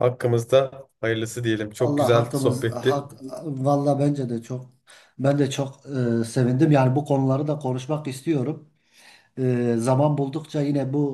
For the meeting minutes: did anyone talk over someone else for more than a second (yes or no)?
yes